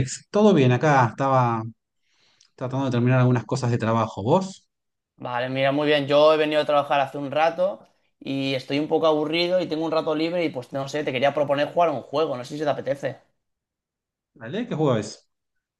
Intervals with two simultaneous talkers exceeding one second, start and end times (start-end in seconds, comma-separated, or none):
none